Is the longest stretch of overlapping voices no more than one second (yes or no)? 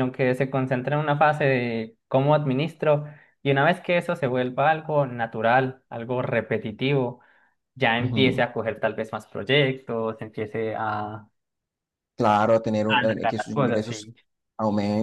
no